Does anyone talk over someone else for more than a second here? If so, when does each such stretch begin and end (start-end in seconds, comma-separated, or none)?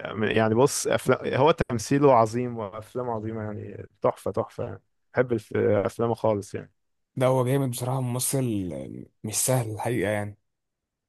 none